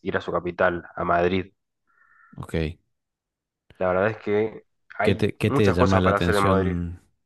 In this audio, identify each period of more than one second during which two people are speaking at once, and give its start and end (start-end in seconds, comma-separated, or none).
5.0-6.8